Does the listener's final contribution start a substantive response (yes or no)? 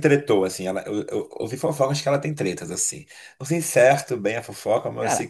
no